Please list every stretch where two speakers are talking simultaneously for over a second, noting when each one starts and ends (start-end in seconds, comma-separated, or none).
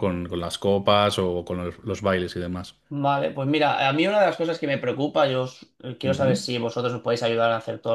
none